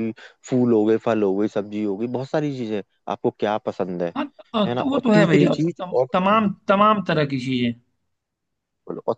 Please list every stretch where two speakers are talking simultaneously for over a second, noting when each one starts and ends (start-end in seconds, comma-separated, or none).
4.7-6.8